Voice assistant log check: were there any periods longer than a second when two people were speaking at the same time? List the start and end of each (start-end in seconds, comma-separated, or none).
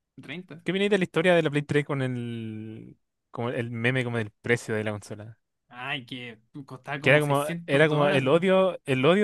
7.0-8.4